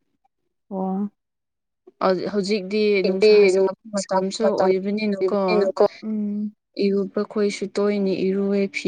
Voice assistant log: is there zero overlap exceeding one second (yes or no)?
no